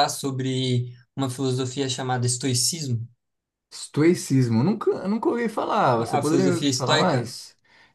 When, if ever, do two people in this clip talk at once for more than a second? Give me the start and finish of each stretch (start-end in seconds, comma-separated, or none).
6.0-7.3